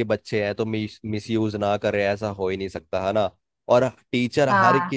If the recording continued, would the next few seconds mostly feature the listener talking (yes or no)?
no